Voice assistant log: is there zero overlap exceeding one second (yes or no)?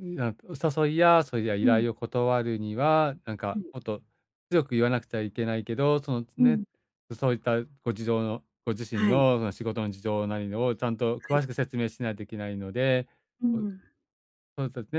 yes